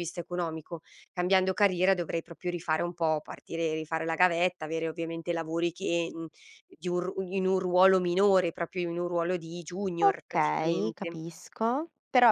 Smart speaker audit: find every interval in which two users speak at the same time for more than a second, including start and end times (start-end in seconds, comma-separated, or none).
10.0-11.2